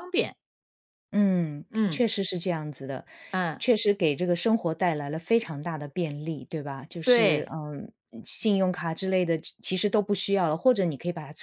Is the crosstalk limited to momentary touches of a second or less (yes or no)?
yes